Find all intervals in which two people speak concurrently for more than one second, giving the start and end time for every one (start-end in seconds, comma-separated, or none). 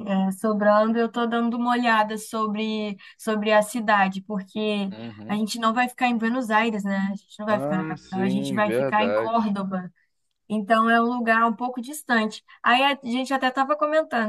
7.5-9.6